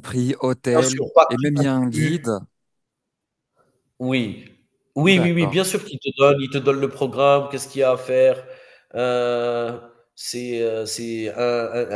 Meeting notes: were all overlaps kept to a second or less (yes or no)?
no